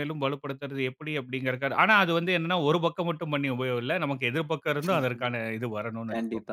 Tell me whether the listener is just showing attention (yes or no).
no